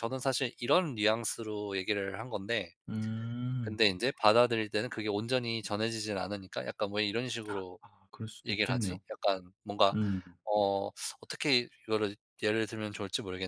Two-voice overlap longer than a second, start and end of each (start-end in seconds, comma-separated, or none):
none